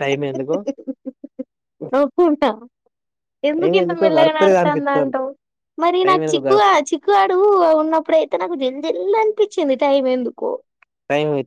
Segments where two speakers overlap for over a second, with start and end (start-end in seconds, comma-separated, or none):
3.6-5.2